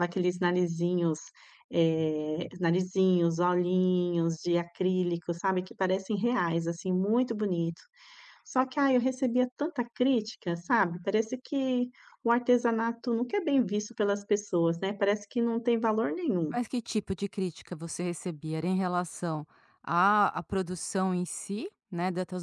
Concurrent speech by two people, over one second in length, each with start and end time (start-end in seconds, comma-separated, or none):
none